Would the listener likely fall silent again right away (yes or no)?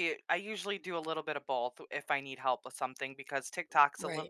yes